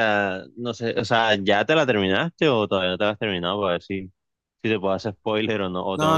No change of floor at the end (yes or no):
no